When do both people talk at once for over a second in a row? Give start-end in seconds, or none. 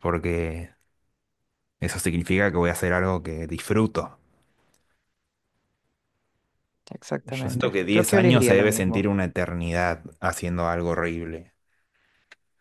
7.2-9.1